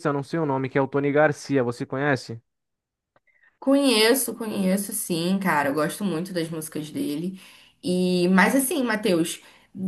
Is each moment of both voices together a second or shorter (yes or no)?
yes